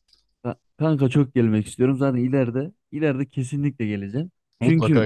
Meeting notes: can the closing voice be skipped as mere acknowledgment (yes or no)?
yes